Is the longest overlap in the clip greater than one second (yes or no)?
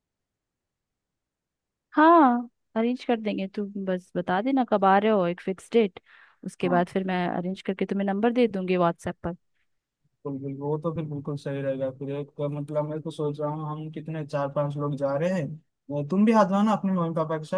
no